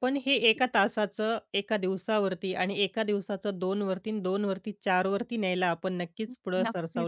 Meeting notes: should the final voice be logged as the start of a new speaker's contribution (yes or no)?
yes